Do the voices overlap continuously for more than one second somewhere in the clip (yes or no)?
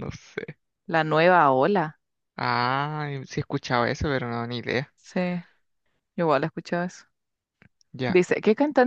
no